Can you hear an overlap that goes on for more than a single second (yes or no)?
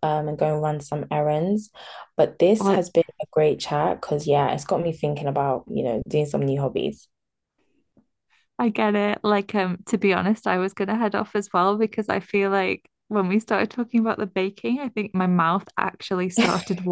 no